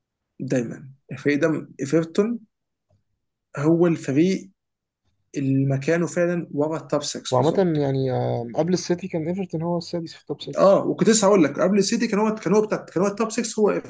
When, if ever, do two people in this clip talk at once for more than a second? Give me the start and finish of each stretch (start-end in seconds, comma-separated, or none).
none